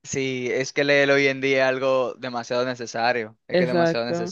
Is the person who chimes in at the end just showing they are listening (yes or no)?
no